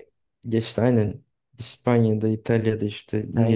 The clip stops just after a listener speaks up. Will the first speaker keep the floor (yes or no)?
yes